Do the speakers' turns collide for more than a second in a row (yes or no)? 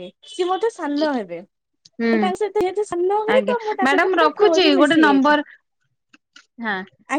yes